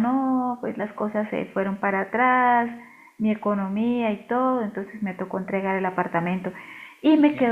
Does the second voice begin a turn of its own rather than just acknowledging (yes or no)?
no